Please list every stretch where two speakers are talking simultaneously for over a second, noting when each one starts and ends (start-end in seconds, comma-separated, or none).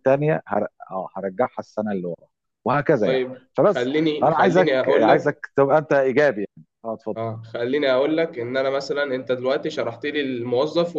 3.0-5.4